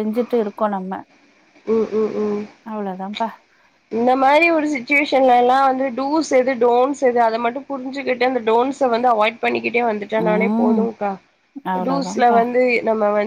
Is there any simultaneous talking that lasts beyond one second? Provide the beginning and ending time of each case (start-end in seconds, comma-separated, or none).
none